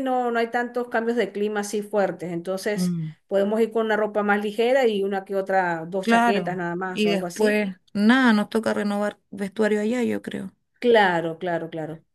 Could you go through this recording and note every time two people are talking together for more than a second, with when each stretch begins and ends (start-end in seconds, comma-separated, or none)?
6.0-7.6